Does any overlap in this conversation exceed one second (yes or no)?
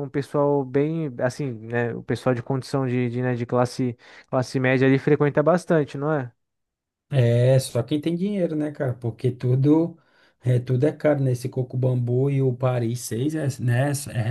no